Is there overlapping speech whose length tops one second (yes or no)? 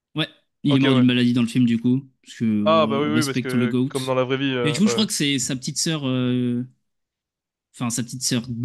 yes